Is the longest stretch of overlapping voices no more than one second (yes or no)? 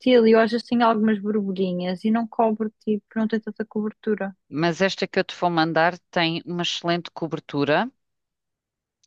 yes